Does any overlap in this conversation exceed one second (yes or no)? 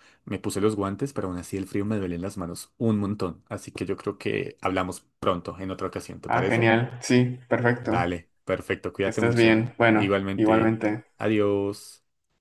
yes